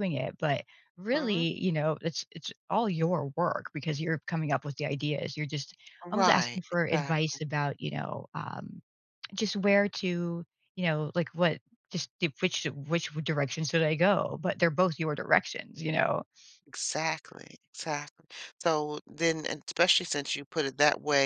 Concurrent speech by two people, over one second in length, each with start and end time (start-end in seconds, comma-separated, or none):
6.1-7.4